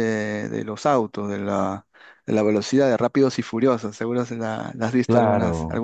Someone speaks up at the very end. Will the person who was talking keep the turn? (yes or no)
no